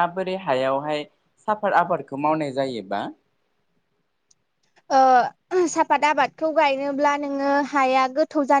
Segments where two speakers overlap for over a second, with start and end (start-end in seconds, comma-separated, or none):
none